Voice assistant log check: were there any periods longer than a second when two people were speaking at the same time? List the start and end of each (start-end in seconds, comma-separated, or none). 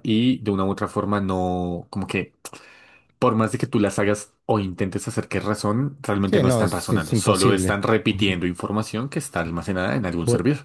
6.2-8.4